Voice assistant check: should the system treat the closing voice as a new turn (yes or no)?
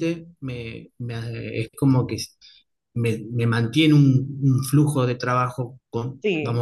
yes